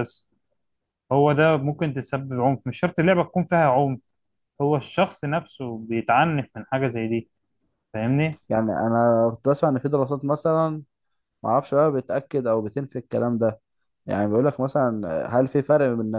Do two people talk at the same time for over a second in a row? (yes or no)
no